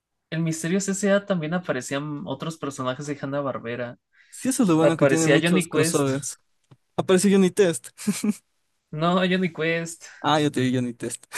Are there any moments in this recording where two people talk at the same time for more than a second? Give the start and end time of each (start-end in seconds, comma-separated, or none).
4.8-6.1